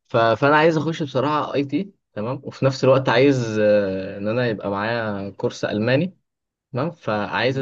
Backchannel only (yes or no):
yes